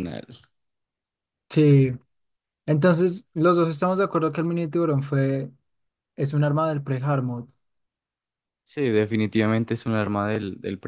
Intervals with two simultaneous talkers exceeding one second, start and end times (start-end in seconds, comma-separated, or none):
none